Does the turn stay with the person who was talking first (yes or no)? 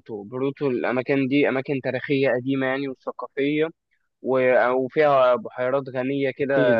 no